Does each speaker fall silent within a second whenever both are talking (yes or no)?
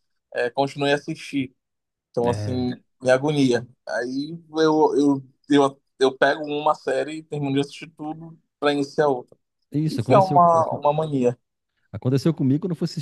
yes